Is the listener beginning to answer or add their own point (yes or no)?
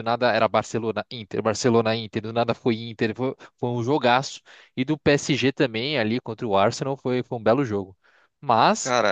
no